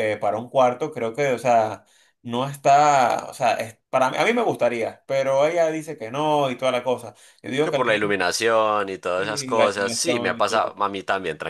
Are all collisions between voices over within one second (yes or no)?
no